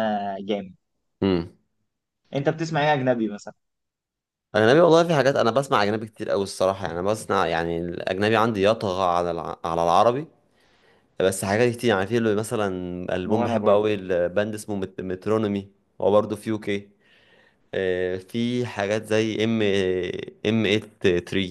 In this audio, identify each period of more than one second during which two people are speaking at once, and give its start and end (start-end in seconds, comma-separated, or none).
none